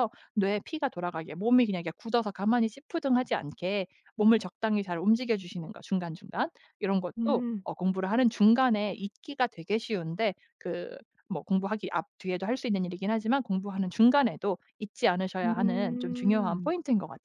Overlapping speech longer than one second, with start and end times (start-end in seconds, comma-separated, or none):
15.4-16.7